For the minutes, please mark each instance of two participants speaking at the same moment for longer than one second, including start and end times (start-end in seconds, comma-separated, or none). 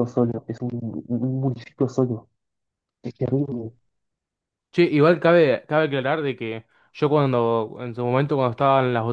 none